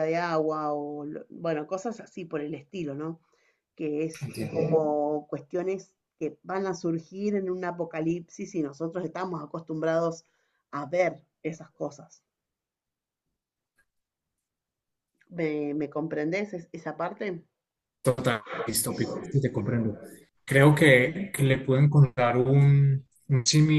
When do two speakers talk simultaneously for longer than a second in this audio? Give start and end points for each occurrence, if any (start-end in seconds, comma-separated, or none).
none